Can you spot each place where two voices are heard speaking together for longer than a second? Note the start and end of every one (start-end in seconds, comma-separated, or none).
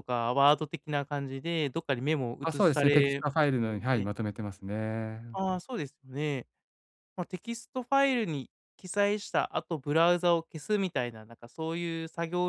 2.4-4.1